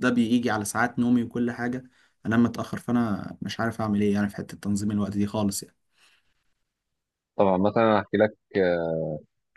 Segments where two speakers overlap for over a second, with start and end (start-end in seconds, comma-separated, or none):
none